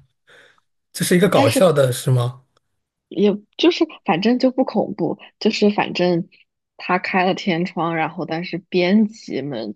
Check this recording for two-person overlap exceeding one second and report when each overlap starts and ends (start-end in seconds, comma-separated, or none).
none